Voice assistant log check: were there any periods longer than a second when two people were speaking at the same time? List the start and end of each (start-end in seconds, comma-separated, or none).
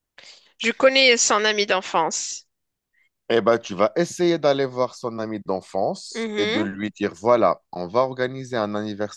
none